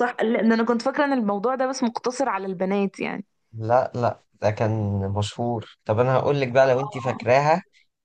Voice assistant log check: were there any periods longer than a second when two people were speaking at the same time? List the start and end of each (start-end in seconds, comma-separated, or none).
none